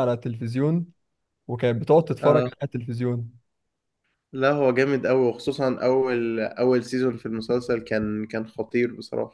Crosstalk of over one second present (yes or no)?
no